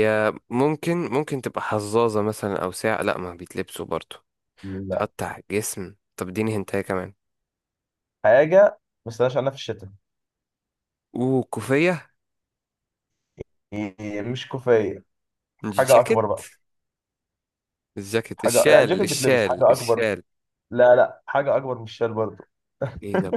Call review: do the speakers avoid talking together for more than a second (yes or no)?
no